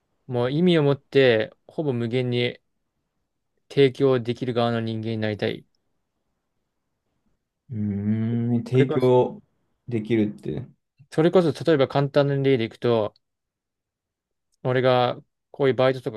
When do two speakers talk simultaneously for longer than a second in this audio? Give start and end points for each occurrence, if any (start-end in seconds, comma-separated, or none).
none